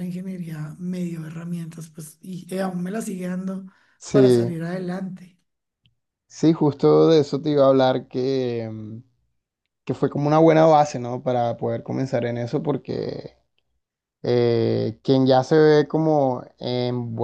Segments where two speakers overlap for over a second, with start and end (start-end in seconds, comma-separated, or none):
none